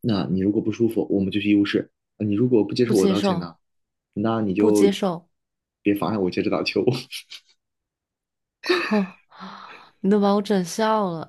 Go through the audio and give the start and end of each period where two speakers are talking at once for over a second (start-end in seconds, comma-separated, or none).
none